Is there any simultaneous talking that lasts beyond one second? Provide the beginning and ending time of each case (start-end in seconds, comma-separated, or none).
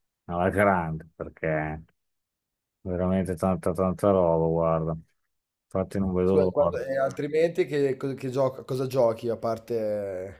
none